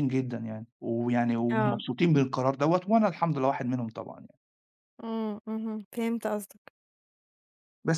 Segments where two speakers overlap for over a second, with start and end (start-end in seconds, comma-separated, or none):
none